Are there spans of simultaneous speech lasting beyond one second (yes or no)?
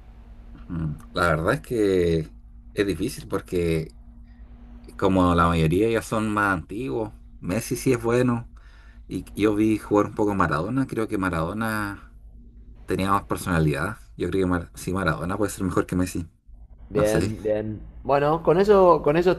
no